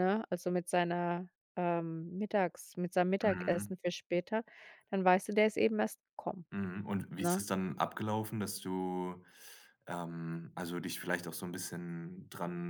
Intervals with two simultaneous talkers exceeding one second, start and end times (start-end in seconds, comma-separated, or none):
none